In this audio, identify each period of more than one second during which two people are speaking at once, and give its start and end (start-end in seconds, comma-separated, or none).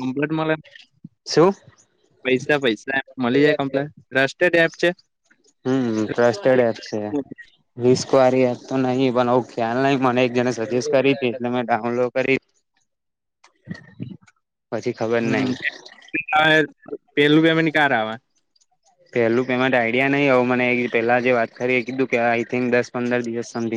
none